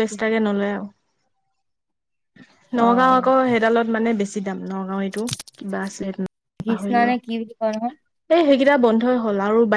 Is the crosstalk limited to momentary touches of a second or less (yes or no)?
yes